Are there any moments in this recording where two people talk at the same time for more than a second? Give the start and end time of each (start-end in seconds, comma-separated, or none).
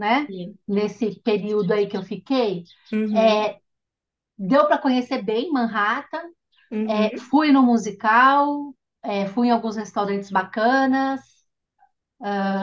none